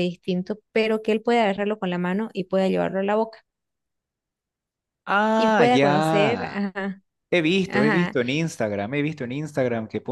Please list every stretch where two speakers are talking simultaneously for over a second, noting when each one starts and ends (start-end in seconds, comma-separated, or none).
5.4-6.6